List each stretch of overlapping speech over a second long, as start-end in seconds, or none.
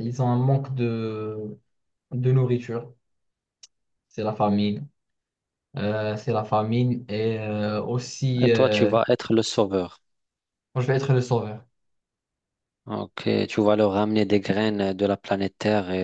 none